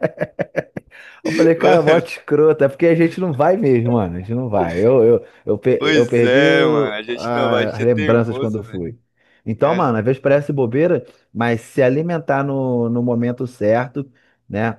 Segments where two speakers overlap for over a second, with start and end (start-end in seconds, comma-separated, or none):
5.8-8.8